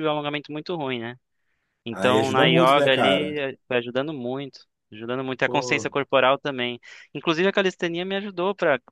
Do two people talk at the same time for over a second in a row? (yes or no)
yes